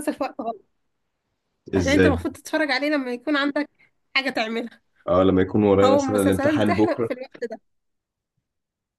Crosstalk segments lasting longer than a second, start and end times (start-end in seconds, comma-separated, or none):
5.8-7.1